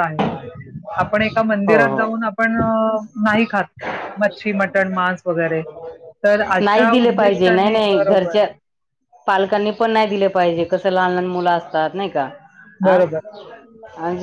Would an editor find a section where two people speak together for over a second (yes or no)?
yes